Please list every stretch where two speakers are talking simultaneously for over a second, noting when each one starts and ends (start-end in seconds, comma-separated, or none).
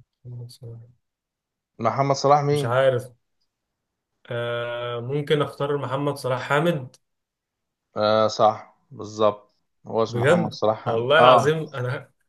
10.1-11.7